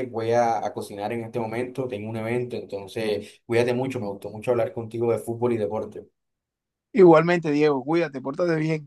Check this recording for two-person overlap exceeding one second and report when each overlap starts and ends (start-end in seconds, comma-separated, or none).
none